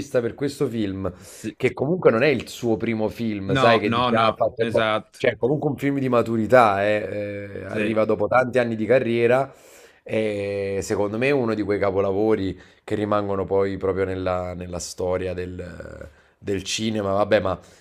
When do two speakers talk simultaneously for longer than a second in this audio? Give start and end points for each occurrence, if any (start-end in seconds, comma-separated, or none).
3.6-5.3